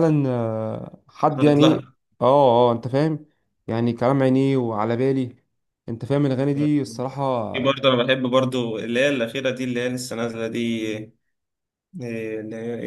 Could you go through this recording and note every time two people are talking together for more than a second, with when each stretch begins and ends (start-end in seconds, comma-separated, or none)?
none